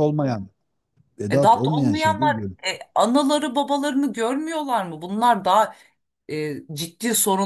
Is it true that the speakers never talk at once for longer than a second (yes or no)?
no